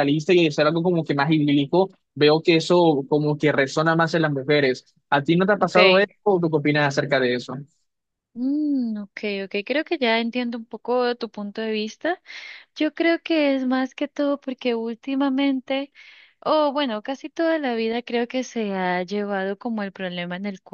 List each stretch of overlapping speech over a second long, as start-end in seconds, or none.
none